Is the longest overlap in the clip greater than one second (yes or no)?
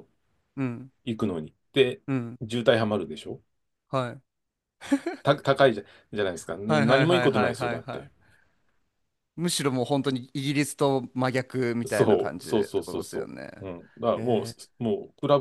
yes